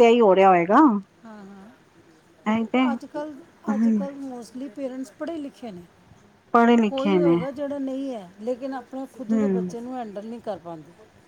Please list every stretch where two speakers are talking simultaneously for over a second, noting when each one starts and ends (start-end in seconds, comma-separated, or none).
none